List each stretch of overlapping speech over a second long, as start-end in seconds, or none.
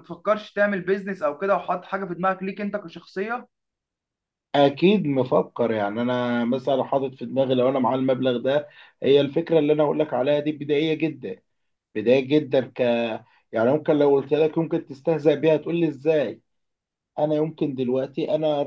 none